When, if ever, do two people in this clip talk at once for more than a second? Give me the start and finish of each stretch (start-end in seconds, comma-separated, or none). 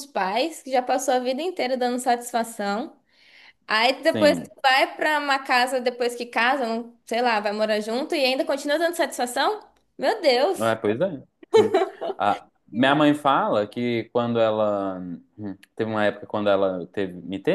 none